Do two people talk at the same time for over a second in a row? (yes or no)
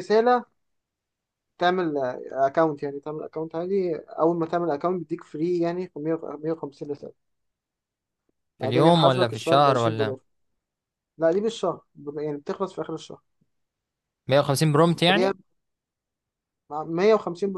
yes